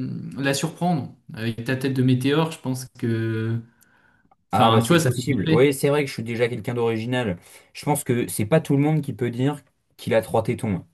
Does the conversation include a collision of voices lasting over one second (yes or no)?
yes